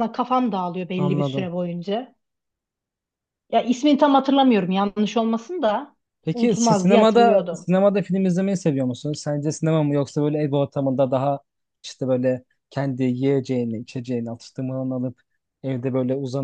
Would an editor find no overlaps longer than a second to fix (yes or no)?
no